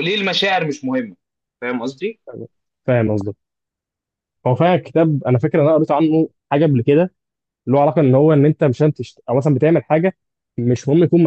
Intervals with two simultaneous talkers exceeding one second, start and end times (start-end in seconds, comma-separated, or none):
none